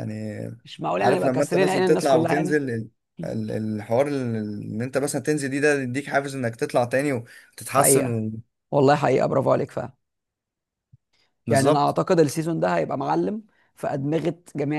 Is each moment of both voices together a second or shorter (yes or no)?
no